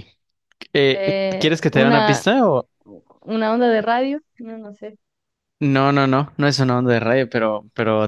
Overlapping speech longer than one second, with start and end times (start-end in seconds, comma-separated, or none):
0.9-2.3